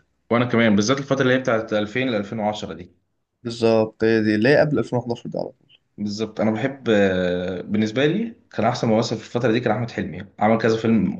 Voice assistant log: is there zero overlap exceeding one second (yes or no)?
yes